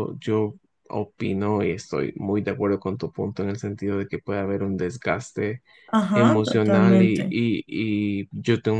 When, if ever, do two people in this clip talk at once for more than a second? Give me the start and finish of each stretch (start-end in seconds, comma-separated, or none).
6.1-7.4